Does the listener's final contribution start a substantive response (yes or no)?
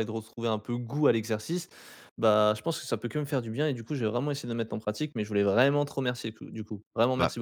yes